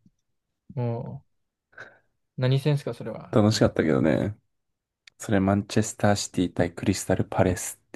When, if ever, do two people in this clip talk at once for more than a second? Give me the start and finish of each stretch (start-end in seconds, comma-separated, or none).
none